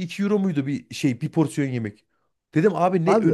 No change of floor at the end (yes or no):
yes